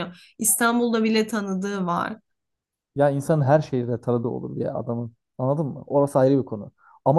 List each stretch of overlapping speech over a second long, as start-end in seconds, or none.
none